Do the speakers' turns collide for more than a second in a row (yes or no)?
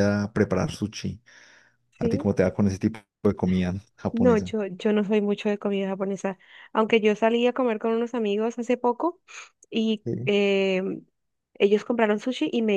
no